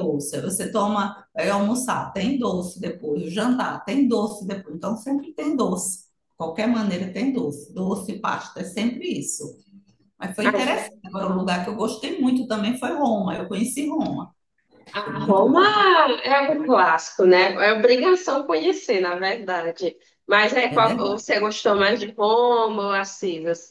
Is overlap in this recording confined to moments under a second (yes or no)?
yes